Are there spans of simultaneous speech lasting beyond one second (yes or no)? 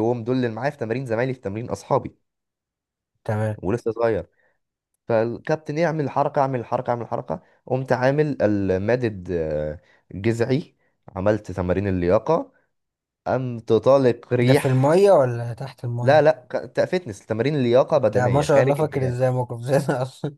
yes